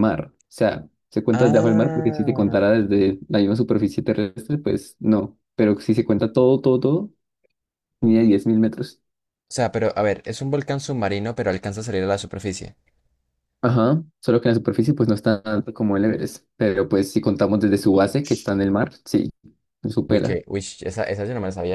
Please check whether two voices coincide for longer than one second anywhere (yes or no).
yes